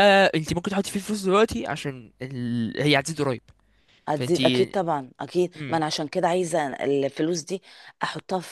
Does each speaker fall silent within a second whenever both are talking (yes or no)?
yes